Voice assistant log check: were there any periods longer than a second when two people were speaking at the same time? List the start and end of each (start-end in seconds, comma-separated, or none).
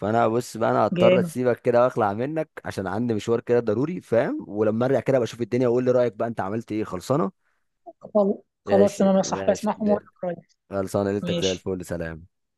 8.7-10.0